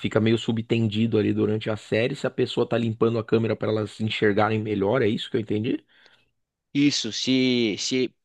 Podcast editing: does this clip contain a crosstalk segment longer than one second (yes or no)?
no